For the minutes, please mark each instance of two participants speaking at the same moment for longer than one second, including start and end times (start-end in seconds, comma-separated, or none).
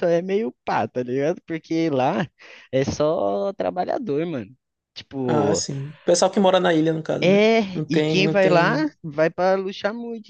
7.2-8.9